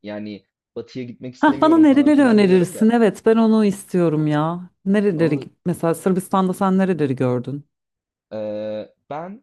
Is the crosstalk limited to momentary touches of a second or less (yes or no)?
no